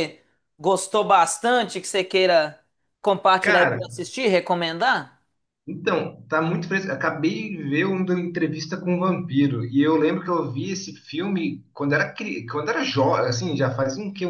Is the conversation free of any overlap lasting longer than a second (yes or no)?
yes